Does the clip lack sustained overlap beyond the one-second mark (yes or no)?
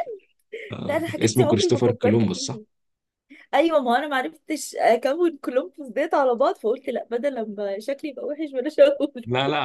no